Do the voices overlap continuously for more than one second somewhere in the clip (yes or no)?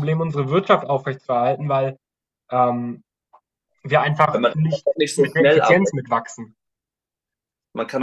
yes